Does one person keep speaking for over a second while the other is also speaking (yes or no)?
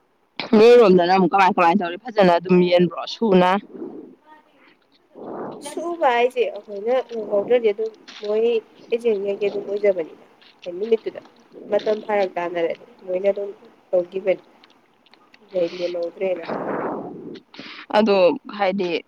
no